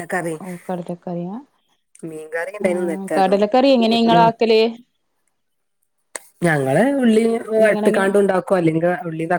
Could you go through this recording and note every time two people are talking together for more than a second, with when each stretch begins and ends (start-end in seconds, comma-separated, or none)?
2.6-4.3